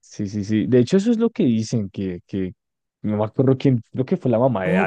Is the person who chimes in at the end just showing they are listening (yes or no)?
no